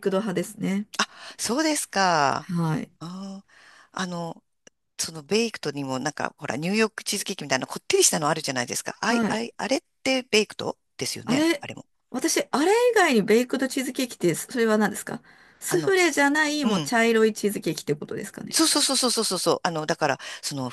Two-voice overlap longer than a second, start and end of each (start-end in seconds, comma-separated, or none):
none